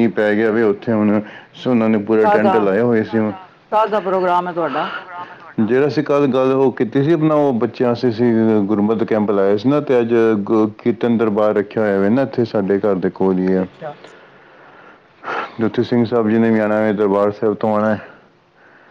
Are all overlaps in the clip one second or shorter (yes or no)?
yes